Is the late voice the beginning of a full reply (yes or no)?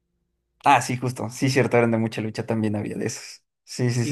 yes